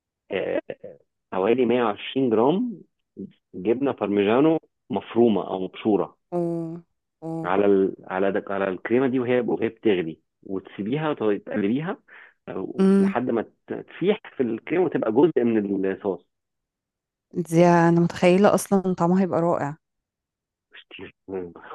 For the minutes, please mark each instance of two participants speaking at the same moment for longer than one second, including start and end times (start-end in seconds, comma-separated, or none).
none